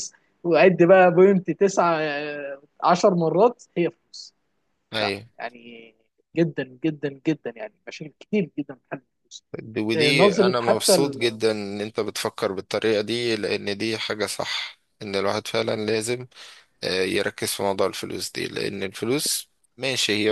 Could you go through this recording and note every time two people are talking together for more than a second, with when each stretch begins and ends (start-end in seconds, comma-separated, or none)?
9.9-11.4